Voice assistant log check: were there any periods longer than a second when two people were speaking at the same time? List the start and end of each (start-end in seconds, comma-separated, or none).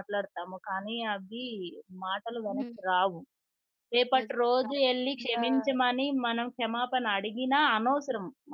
4.2-6.0